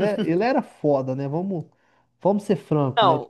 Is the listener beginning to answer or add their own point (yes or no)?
yes